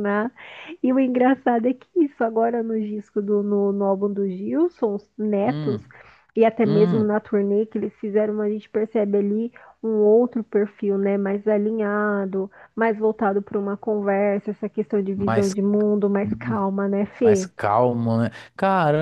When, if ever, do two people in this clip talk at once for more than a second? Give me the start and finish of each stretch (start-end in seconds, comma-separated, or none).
none